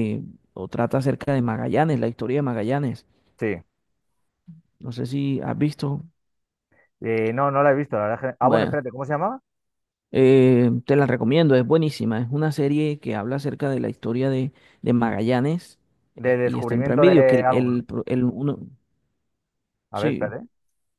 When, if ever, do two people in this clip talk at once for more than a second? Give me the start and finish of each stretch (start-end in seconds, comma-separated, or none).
16.2-17.8